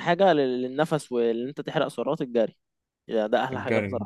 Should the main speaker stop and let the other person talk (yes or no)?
no